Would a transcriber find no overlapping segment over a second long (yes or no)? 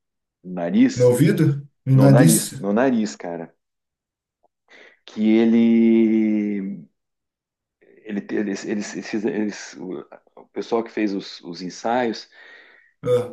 yes